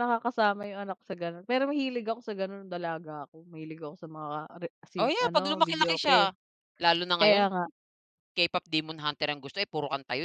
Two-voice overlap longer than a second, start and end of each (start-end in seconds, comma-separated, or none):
5.0-6.3